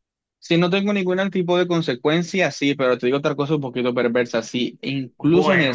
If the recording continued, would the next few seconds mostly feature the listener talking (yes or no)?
yes